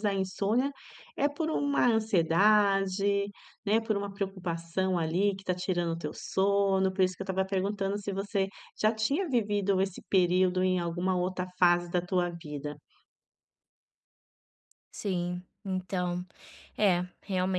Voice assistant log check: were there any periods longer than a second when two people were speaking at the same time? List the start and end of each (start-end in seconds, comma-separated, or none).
none